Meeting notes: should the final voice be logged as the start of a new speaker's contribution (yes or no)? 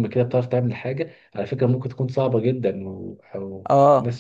no